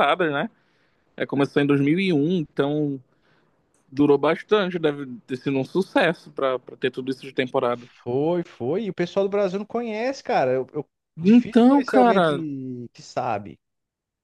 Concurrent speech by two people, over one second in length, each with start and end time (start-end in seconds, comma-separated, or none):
11.2-12.4